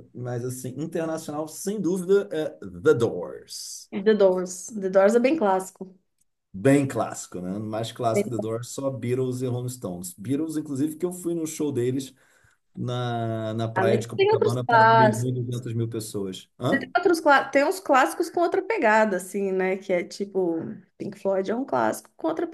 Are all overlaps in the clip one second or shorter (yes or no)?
no